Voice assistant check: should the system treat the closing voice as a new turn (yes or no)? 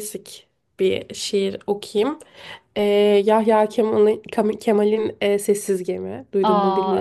yes